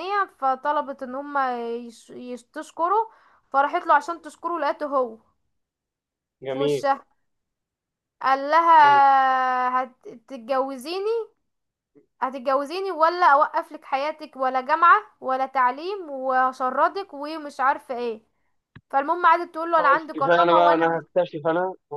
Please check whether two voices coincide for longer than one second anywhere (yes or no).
yes